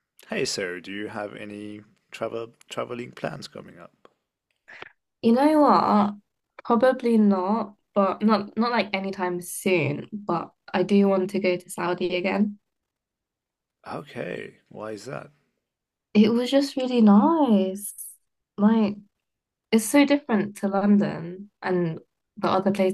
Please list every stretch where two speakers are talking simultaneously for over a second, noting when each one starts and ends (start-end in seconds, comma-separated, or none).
none